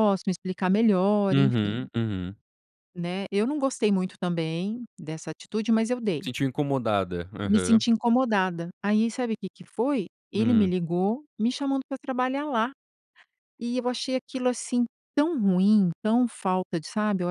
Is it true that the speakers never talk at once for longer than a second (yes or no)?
yes